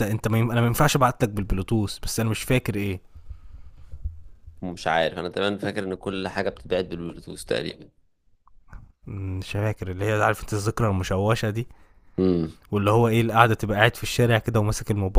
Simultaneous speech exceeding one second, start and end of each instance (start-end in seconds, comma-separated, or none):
none